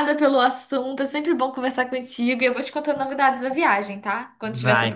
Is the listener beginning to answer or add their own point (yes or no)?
yes